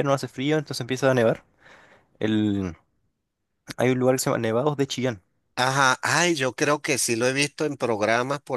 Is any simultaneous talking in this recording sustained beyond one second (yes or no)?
no